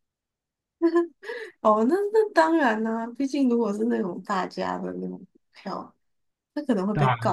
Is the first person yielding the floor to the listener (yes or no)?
no